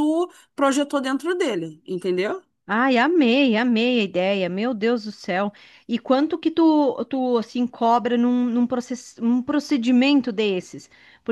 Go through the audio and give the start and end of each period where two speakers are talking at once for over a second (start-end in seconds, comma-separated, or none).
none